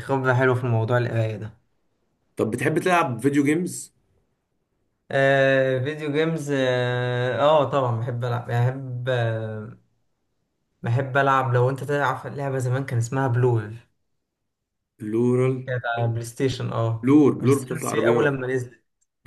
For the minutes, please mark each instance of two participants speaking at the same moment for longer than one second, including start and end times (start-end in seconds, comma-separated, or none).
17.0-18.4